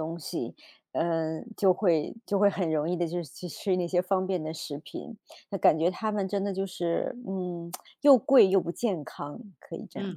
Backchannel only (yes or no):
no